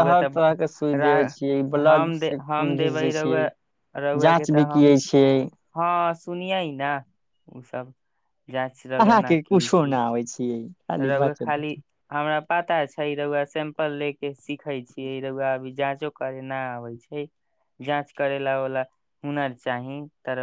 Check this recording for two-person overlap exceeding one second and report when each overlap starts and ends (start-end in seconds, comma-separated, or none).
1.9-3.5